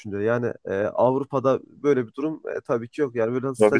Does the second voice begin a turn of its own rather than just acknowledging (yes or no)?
no